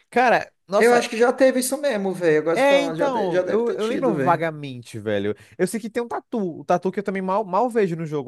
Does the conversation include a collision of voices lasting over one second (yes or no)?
yes